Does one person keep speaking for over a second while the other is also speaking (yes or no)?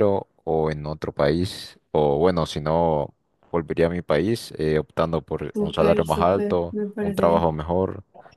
yes